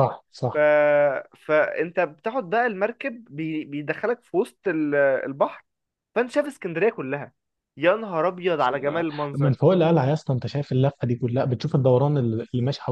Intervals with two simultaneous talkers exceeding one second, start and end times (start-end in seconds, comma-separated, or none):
none